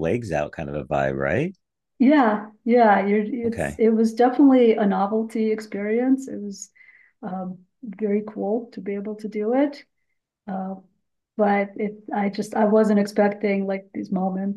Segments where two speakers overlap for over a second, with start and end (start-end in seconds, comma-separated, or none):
none